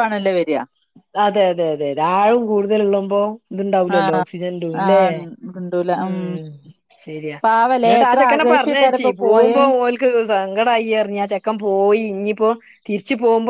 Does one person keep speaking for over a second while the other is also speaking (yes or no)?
yes